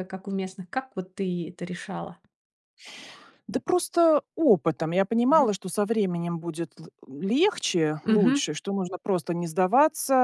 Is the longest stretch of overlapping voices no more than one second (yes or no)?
yes